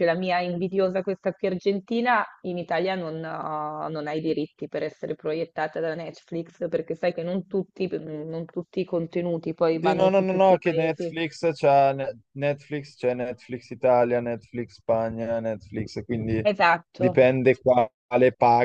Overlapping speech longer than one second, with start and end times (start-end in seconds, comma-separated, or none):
9.8-11.1